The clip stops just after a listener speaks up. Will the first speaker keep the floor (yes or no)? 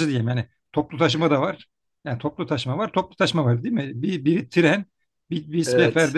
yes